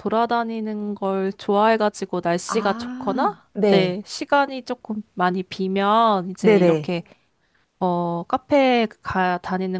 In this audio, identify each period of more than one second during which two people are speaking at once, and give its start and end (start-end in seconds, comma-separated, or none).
2.5-4.0